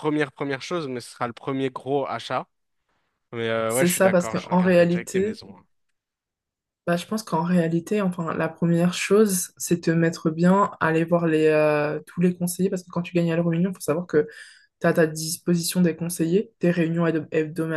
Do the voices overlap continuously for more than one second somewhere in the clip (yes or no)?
yes